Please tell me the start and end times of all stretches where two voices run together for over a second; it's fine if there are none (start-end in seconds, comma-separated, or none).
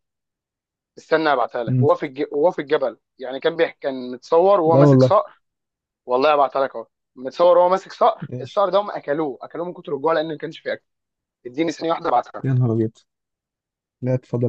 none